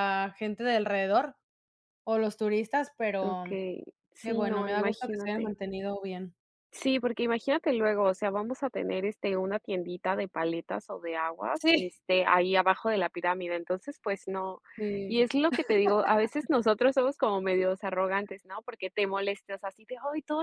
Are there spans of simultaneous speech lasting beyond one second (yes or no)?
yes